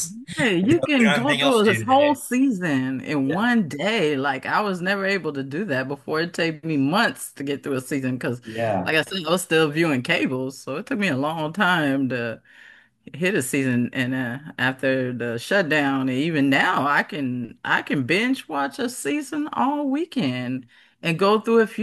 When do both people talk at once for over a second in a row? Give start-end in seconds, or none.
0.6-2.2